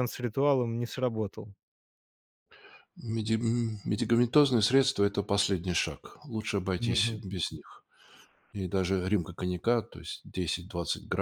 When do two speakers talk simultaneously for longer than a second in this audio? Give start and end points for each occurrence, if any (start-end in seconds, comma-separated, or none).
none